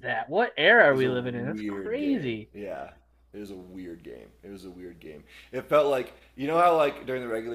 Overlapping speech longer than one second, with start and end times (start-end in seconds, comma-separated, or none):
0.9-2.5